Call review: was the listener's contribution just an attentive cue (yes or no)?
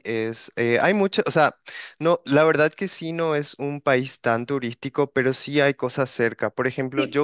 no